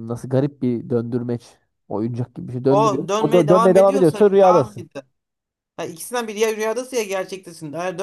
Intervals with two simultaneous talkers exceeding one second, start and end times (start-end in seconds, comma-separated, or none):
2.7-4.9